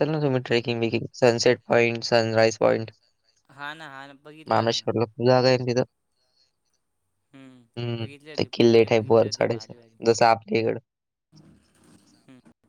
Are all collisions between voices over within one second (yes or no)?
no